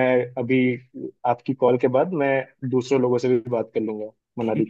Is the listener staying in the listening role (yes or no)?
no